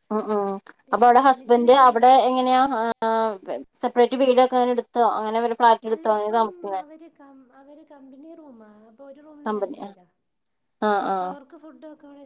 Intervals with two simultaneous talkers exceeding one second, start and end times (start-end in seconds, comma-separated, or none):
none